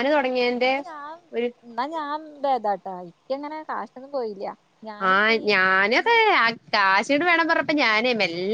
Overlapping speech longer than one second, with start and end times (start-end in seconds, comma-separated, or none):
none